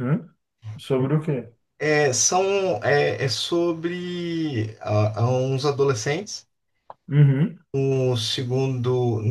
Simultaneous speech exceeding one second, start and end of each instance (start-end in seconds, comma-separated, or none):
none